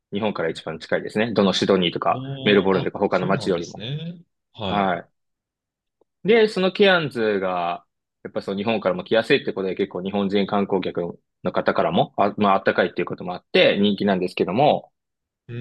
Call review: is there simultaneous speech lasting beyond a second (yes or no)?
yes